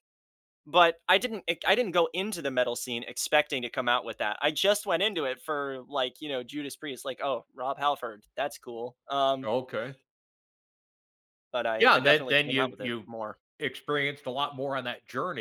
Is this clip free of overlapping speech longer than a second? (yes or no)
no